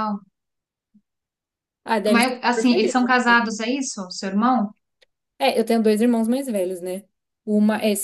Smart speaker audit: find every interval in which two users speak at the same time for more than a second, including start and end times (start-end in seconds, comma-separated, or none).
2.1-3.4